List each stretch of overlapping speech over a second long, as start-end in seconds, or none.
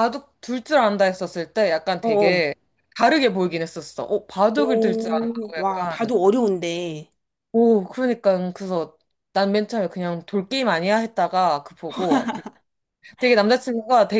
4.6-6.1